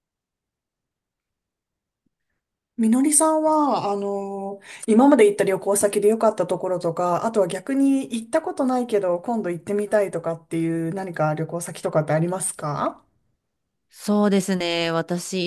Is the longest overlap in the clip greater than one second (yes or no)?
no